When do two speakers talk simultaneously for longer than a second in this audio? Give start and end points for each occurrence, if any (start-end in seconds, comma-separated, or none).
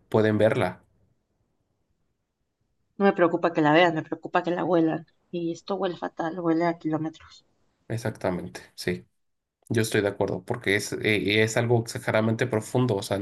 none